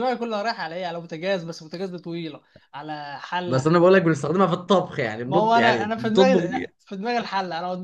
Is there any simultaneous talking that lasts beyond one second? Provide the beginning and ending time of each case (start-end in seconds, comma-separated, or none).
5.3-6.7